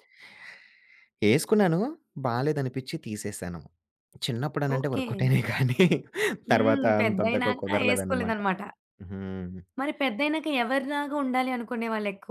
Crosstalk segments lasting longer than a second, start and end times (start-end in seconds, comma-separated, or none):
6.5-8.4